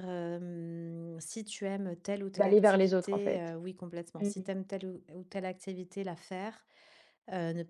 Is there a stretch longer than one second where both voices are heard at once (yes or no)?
yes